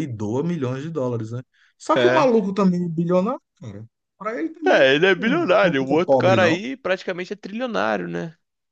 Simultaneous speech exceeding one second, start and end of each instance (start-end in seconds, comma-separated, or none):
4.7-6.6